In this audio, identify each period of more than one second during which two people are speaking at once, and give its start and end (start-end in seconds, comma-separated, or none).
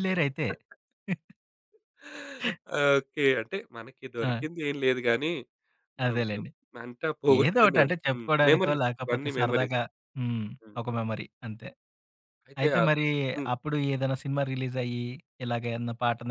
7.5-9.8